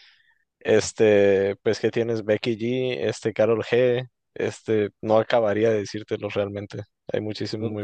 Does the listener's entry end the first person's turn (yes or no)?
yes